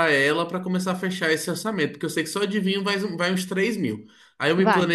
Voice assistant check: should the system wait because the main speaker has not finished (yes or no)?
yes